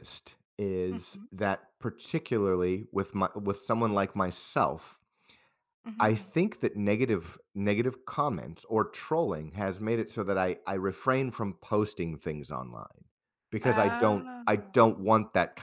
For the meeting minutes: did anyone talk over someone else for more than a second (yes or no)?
yes